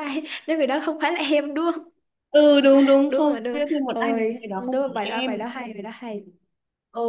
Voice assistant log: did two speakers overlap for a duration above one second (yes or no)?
yes